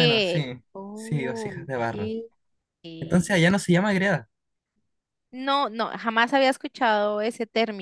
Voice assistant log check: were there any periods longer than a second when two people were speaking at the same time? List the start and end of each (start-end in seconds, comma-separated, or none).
0.8-2.1